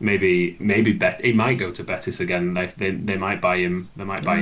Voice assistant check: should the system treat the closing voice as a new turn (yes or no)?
no